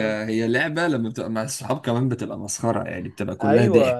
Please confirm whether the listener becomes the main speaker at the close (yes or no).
yes